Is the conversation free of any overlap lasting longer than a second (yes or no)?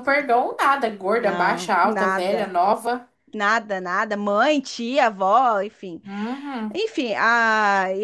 no